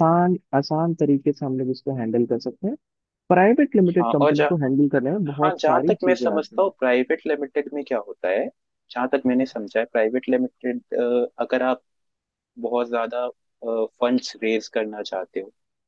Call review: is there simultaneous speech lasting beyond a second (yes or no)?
yes